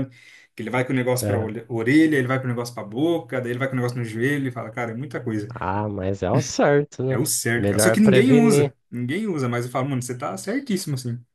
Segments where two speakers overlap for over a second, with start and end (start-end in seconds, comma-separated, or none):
7.1-8.7